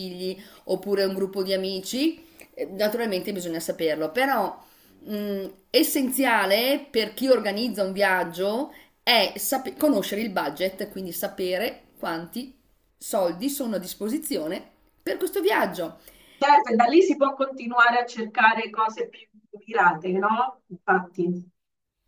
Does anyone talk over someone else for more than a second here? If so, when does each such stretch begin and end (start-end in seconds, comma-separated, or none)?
none